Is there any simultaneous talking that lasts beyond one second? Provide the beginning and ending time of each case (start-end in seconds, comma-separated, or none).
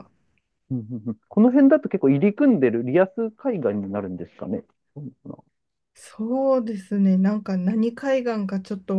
none